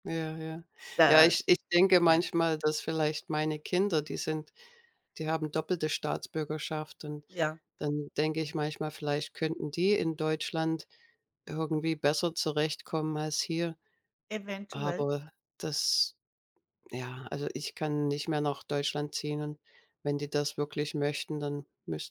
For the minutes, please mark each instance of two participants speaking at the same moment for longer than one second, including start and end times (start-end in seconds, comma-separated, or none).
none